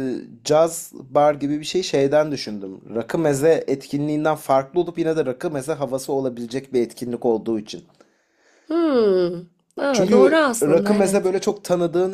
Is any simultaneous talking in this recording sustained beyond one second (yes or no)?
yes